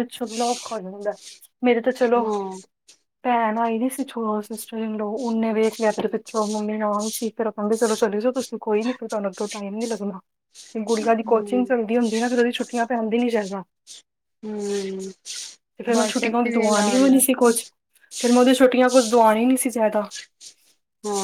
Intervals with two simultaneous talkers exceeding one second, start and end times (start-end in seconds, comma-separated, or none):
15.9-17.2